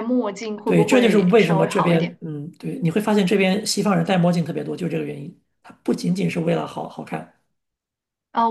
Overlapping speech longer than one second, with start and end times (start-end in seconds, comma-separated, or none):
0.7-2.2